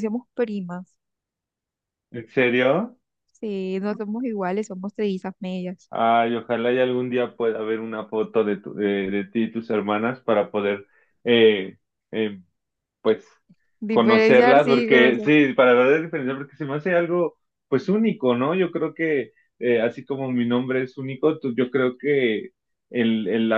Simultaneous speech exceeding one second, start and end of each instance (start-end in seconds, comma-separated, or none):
13.9-15.3